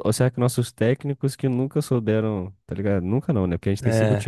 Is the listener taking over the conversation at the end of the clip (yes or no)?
no